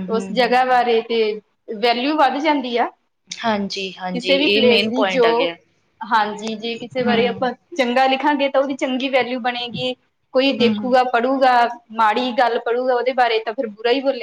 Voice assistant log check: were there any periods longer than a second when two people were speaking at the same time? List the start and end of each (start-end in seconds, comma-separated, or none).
3.4-5.3